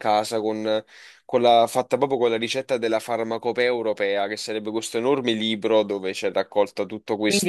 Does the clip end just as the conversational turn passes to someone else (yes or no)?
yes